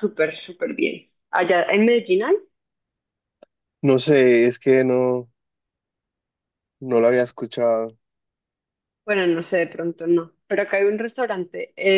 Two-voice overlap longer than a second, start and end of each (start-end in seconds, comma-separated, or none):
none